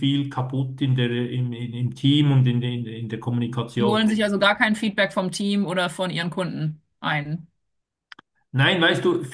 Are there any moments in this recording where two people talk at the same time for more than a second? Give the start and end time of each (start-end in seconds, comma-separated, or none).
none